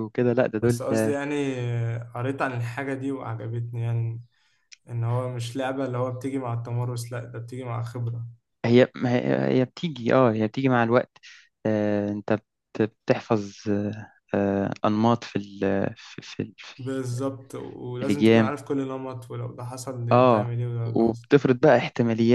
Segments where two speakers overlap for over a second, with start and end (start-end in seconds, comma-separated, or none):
20.1-21.7